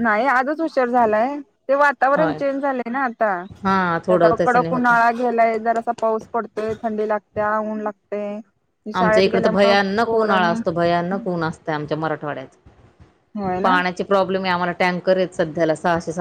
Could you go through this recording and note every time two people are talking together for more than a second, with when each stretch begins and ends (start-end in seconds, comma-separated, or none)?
3.6-5.0